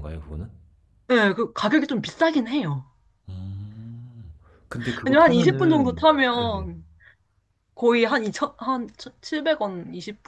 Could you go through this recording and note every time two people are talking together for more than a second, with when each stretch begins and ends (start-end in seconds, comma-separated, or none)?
5.0-6.7